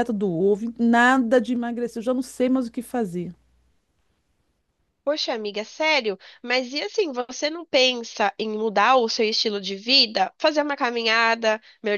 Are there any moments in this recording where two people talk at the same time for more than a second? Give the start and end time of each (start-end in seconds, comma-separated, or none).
none